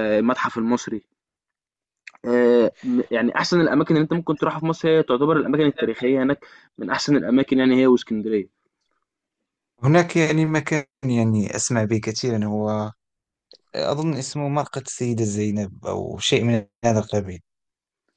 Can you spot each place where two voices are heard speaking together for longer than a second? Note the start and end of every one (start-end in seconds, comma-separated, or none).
none